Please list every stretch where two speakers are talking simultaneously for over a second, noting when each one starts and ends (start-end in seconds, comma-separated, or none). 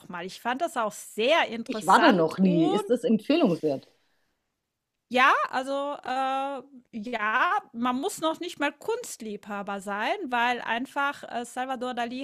1.7-2.9